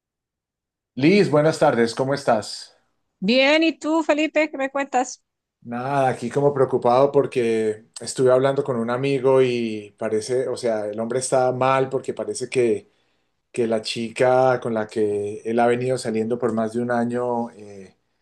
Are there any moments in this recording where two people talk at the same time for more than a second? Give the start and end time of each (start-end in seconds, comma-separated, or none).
none